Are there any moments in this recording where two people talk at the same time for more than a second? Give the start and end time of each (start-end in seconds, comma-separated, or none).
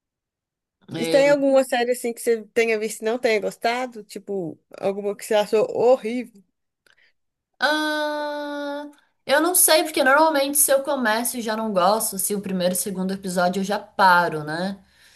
none